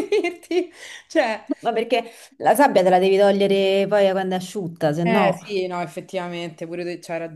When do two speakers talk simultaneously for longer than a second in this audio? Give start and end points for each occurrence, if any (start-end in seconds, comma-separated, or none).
none